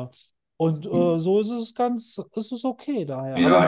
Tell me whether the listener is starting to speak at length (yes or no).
yes